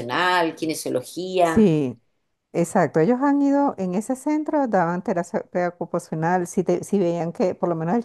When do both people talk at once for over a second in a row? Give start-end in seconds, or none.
none